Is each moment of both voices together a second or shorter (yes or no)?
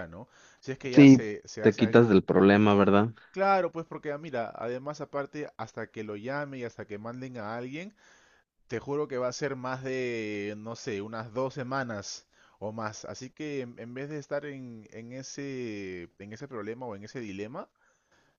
no